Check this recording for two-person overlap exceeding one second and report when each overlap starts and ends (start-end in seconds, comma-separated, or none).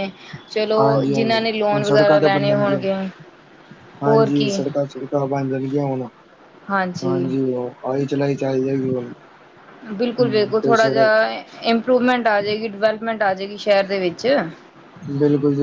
0.8-2.8